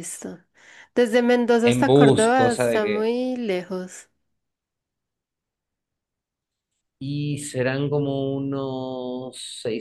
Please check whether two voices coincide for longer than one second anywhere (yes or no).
yes